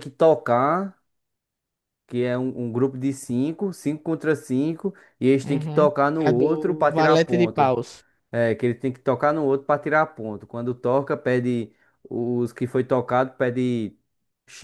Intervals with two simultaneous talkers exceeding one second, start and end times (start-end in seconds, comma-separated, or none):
5.4-7.7